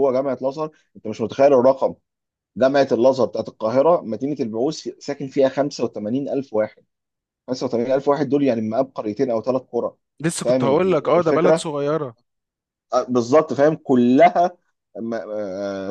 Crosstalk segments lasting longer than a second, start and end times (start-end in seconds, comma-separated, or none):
10.4-11.7